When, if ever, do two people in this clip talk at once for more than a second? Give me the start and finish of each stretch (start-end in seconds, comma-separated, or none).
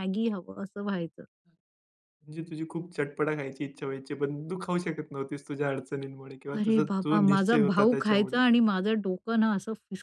6.6-8.4